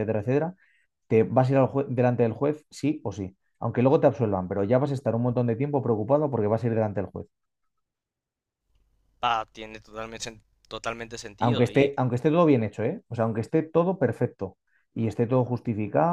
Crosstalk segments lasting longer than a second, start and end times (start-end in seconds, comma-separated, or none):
none